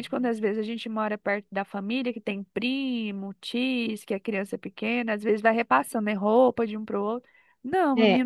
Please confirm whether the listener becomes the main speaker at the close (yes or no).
no